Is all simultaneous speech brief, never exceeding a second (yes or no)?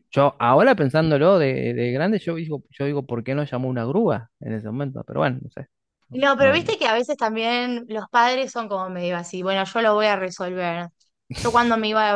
yes